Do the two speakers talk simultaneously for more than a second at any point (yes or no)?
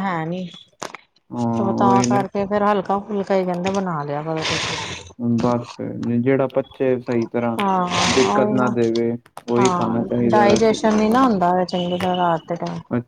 yes